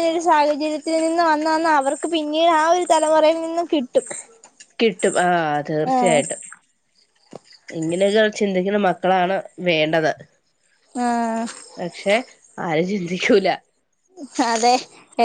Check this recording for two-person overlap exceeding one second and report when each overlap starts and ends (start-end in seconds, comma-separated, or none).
none